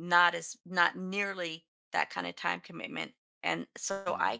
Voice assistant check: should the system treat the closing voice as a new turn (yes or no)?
no